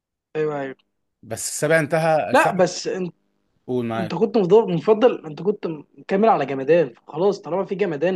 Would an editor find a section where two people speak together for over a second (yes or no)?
no